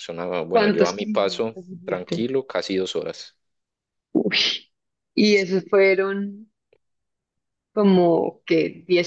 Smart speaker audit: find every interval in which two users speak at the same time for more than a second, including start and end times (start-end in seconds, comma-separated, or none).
0.5-2.3